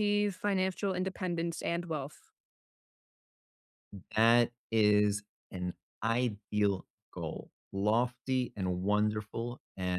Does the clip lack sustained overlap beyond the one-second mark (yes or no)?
yes